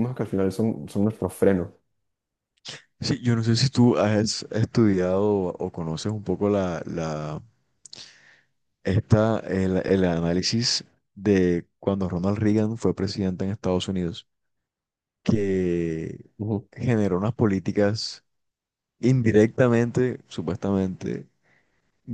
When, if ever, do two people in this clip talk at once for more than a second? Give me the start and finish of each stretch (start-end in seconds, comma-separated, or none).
none